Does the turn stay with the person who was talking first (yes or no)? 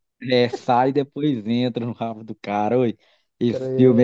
yes